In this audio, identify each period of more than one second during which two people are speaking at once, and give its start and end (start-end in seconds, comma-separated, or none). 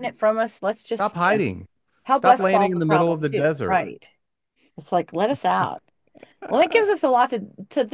2.1-3.8